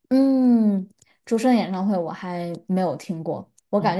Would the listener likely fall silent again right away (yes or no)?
yes